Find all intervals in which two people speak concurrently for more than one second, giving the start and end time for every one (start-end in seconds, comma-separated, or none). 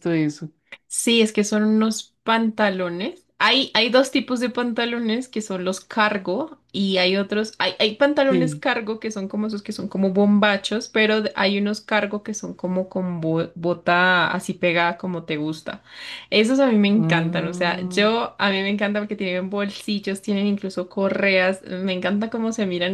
16.9-18.1